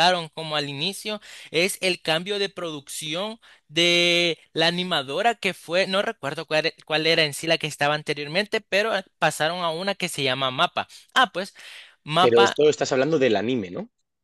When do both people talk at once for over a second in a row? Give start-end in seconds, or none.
none